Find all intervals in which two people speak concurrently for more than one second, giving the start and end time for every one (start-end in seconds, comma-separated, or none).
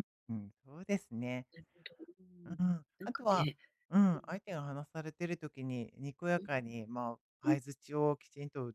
none